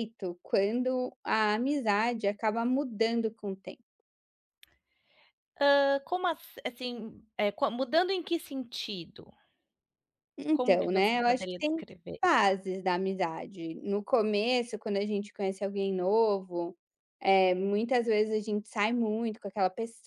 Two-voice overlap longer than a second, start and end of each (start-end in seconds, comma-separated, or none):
10.5-11.8